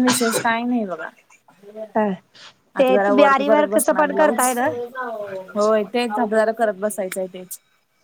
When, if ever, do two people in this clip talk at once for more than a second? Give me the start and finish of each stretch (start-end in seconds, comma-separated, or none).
2.8-4.5